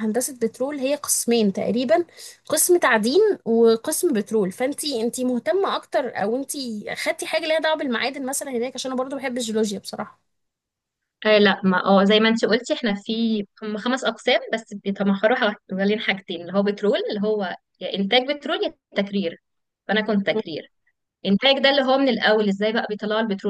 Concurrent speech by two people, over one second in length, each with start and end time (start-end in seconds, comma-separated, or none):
none